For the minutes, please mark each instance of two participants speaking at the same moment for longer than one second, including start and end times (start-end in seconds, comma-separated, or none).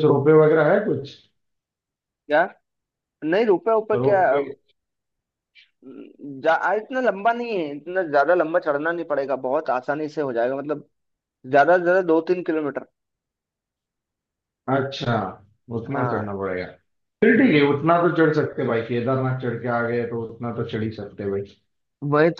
none